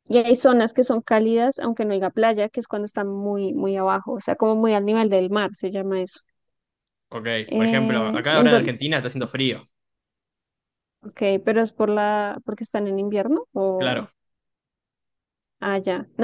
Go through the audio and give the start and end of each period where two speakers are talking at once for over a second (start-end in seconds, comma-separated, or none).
7.5-8.7